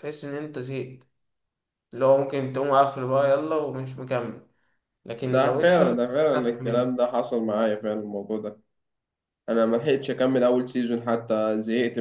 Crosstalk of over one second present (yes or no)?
yes